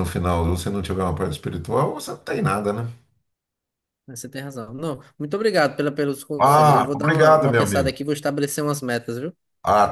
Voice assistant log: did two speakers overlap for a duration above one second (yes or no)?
yes